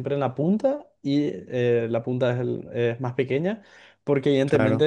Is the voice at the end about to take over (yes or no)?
no